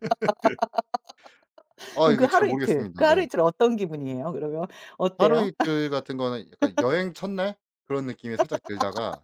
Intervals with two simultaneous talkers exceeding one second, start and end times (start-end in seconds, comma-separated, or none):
2.0-3.2